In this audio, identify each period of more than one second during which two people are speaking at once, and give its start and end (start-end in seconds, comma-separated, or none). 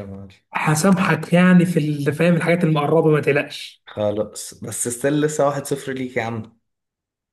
none